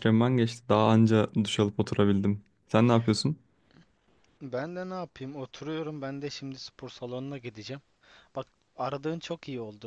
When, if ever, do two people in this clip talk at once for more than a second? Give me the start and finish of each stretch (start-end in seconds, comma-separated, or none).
none